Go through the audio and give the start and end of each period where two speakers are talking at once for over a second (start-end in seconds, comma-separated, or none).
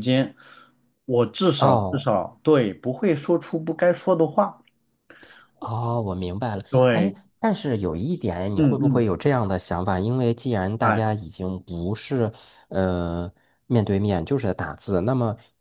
none